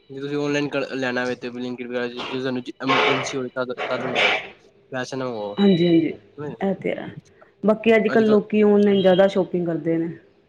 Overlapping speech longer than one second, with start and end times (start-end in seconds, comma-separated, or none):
none